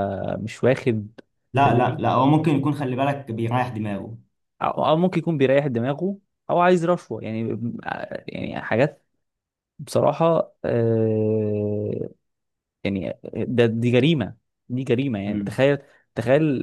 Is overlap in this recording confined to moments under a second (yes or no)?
yes